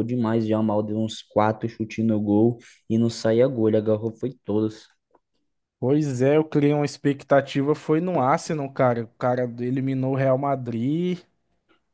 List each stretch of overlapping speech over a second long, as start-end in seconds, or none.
none